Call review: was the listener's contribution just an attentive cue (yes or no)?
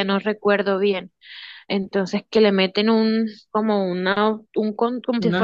yes